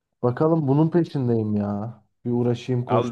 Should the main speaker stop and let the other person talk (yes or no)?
yes